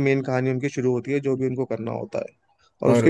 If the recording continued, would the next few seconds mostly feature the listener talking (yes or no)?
no